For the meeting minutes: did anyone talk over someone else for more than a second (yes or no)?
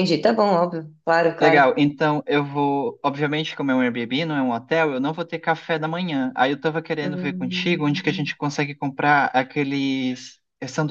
yes